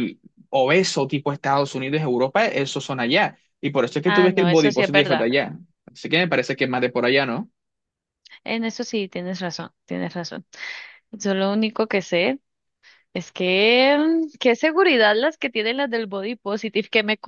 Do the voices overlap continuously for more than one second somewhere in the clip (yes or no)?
yes